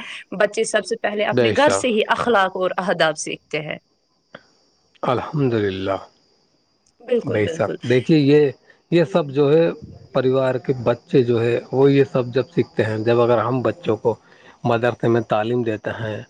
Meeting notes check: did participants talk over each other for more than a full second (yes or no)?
no